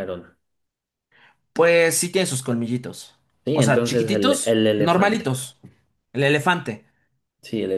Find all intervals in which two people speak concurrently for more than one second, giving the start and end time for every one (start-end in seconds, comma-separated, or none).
3.5-5.3